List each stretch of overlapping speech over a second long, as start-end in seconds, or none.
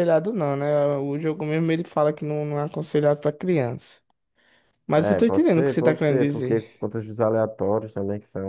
5.0-6.6